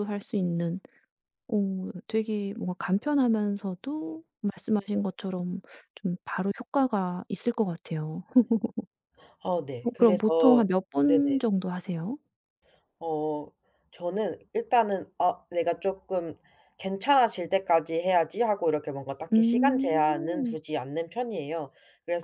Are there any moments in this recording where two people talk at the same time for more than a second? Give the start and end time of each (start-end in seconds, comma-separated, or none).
19.3-20.6